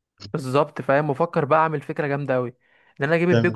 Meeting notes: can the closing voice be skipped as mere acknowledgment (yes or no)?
yes